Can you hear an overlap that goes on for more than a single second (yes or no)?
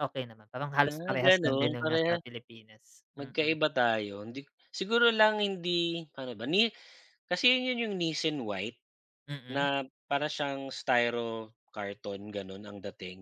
yes